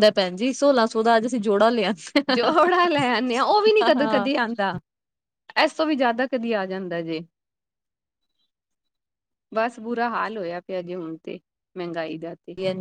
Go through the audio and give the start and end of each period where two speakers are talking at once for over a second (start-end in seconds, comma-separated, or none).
none